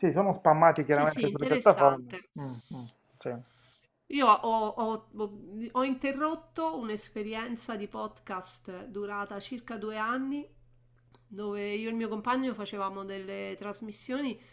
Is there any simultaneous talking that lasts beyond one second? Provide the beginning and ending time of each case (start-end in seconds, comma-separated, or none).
0.9-2.3